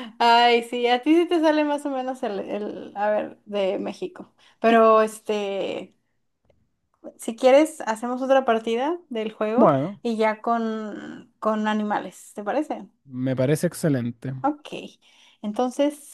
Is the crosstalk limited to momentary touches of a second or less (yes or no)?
yes